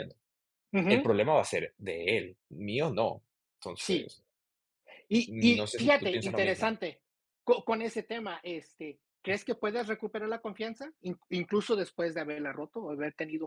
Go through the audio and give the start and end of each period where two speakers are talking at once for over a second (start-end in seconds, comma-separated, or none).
5.3-6.7